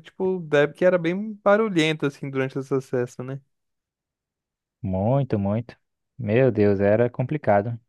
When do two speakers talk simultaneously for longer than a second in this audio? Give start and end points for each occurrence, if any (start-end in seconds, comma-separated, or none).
none